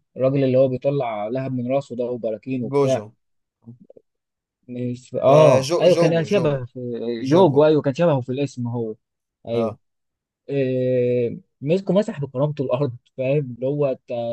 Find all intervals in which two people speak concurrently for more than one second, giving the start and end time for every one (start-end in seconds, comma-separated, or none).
5.3-6.6